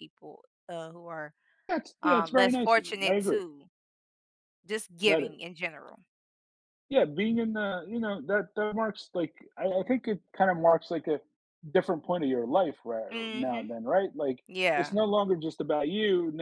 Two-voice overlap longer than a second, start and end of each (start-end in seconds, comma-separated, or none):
2.0-3.4